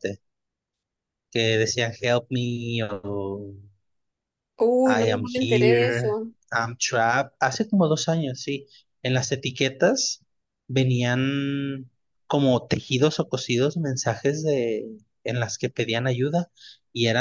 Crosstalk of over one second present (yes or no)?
yes